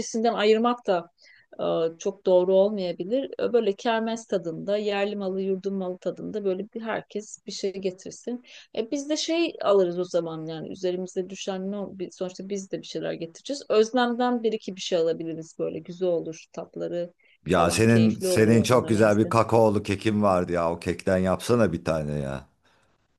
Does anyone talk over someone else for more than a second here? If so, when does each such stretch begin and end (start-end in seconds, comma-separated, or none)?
17.5-19.3